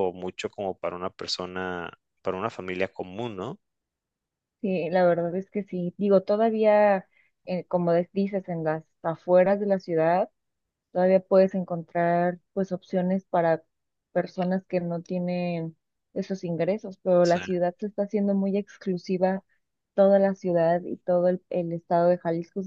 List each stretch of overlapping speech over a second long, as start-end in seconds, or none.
none